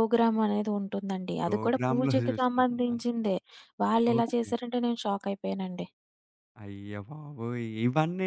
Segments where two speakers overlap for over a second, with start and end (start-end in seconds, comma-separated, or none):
1.4-2.9